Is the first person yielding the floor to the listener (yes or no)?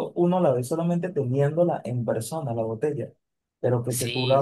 no